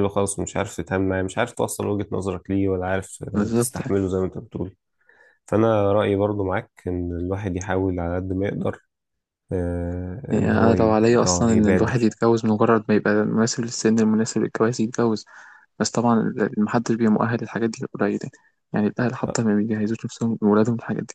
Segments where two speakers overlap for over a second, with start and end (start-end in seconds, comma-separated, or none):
10.3-12.1